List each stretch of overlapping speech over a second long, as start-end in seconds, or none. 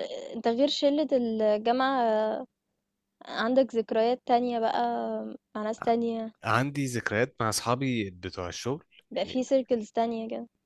none